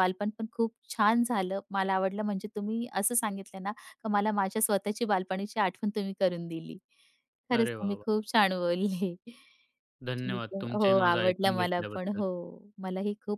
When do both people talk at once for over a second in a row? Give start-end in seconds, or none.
10.2-12.2